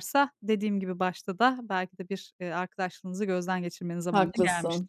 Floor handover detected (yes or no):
yes